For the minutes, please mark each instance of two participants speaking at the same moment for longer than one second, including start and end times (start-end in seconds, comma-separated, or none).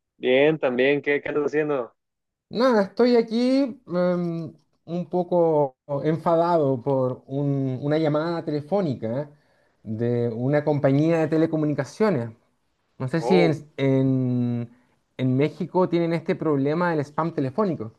none